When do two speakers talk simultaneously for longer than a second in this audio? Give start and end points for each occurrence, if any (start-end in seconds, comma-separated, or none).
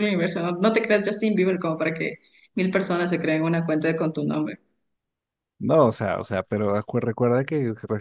none